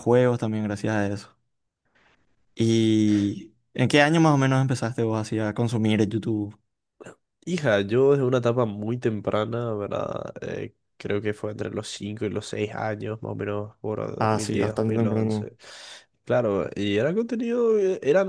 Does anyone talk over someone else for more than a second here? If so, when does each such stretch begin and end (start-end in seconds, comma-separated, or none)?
14.2-15.5